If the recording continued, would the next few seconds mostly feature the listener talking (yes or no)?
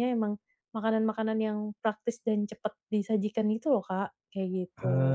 yes